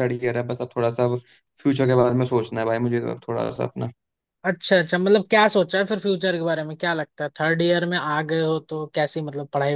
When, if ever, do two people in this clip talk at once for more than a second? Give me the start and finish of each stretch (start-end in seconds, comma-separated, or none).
none